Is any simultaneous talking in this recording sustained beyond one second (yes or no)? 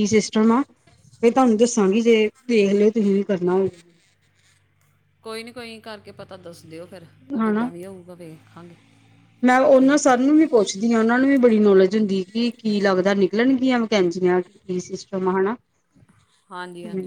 no